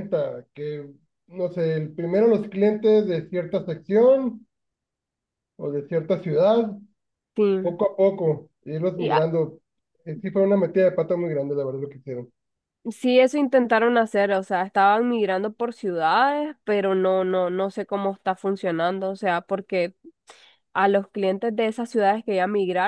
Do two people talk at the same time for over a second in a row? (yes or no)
no